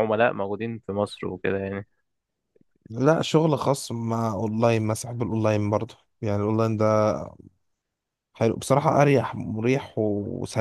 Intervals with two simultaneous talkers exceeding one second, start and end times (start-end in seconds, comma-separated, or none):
none